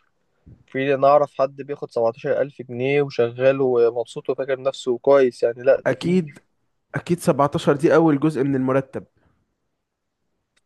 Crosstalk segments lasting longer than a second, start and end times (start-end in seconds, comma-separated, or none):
none